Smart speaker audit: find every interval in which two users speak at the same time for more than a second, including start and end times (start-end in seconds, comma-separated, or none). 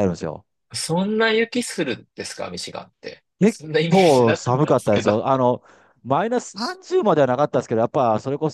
3.4-5.1